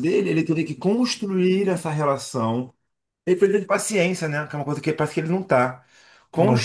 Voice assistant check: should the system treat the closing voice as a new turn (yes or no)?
no